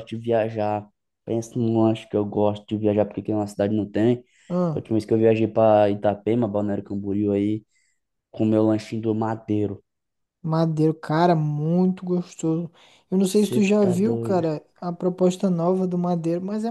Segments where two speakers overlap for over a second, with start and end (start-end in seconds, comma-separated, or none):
13.2-14.4